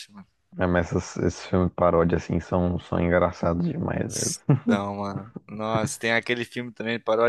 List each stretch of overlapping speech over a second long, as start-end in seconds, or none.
none